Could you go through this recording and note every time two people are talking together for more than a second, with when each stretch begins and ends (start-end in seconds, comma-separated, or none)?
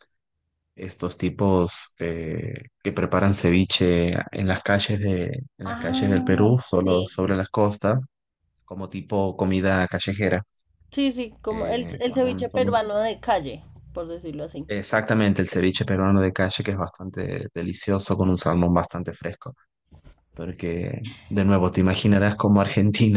5.7-7.0, 11.5-12.8